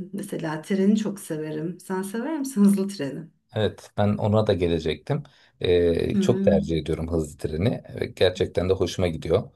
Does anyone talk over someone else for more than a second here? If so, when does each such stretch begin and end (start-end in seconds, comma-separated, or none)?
none